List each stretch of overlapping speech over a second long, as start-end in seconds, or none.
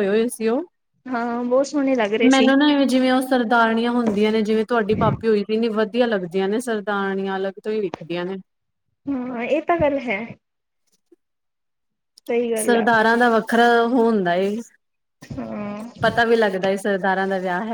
none